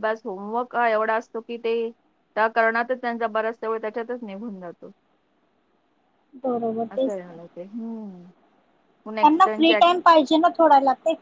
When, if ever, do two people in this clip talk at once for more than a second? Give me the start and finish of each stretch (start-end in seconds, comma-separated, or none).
none